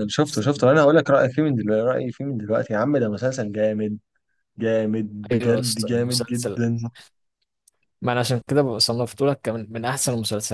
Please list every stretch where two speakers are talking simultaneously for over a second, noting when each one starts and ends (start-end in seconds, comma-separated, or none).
5.3-6.6